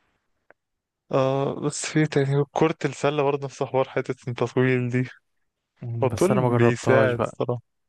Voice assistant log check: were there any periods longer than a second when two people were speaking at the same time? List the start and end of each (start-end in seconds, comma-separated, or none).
6.0-7.4